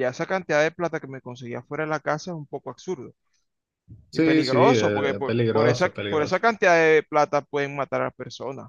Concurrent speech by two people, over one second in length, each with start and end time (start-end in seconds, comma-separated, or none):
4.1-6.4